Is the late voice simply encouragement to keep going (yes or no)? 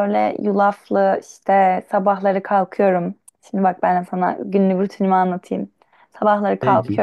yes